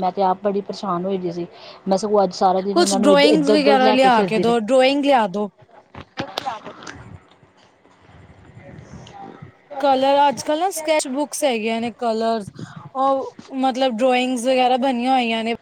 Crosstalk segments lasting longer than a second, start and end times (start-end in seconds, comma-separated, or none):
2.7-4.7